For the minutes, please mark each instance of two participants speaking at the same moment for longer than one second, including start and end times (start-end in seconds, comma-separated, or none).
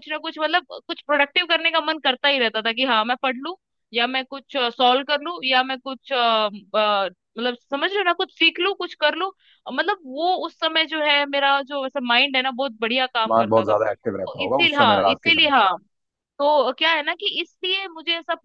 13.2-15.7